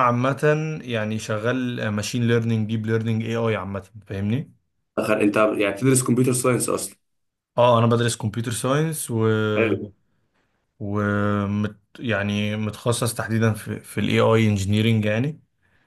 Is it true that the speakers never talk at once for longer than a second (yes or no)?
yes